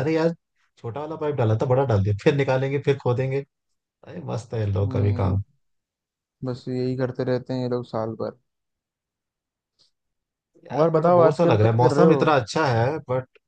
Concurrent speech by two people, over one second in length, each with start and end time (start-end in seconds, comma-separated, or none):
10.8-12.3